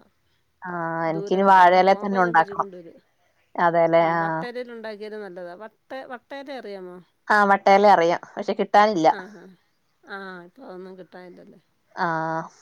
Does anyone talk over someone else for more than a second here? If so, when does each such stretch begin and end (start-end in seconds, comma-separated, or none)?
1.1-2.7